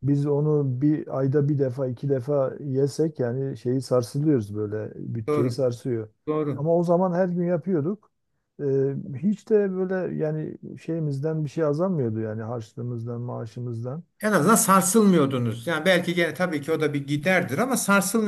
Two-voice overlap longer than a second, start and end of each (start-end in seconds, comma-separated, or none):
none